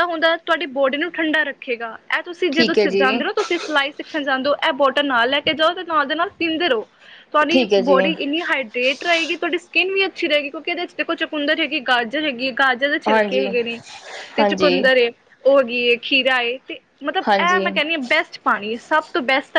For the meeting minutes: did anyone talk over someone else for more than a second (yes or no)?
no